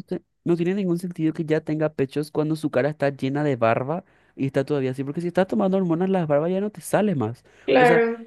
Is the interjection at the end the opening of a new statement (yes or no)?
no